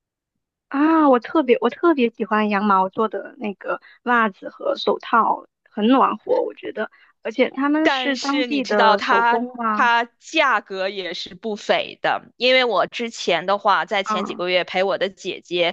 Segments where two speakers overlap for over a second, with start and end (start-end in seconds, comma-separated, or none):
7.8-9.9